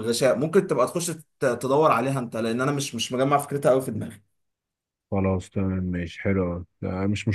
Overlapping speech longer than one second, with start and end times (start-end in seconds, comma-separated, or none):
none